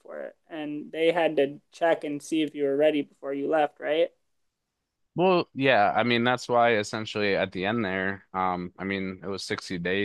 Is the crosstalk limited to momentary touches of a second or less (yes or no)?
yes